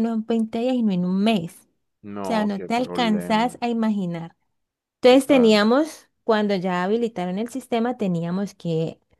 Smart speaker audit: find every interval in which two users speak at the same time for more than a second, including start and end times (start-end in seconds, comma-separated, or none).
2.2-3.6